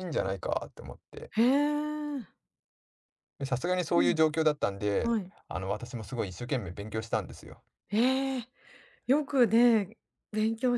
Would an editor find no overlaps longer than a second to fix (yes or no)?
yes